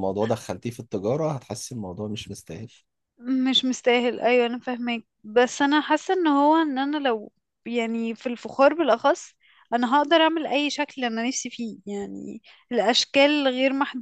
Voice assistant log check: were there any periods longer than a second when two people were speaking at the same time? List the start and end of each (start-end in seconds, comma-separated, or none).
none